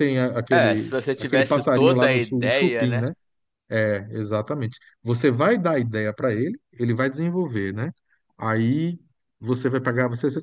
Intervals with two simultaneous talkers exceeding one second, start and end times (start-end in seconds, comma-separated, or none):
0.5-3.1